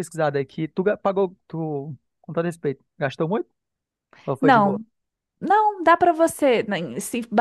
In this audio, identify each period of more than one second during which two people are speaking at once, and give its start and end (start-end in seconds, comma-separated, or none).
none